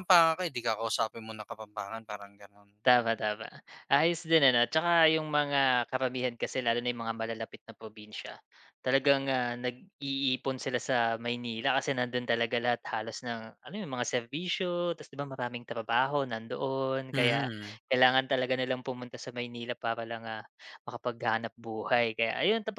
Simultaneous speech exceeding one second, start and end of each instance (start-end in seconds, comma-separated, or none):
none